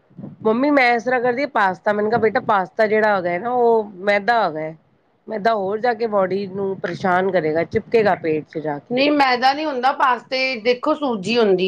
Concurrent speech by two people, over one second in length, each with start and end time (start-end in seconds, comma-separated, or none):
none